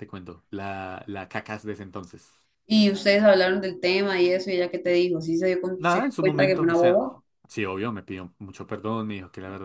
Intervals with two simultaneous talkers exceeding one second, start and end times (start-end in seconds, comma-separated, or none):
5.8-7.0